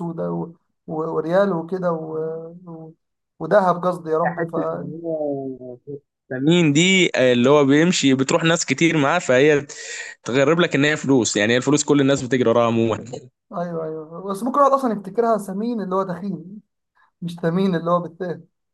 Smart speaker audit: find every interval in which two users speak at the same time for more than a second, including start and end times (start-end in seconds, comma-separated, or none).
none